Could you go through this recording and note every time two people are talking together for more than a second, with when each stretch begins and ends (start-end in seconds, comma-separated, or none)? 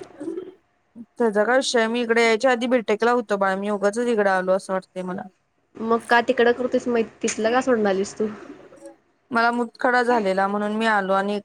none